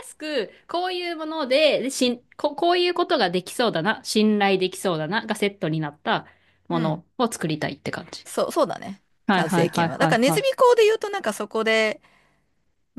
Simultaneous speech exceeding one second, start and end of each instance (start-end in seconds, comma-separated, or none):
9.3-10.5